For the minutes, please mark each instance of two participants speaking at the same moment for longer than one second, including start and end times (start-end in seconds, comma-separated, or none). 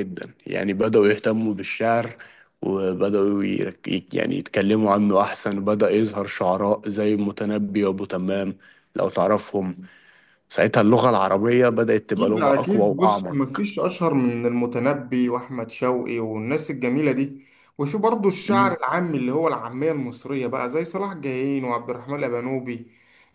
12.2-13.7